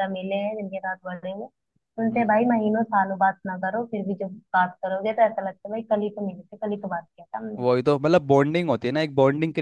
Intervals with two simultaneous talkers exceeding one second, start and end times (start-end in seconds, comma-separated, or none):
none